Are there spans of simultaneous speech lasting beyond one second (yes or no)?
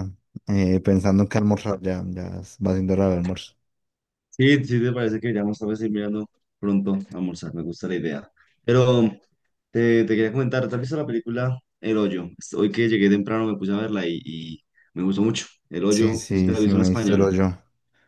yes